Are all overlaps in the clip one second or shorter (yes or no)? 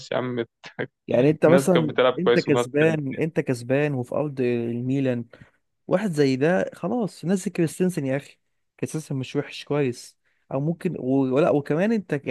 no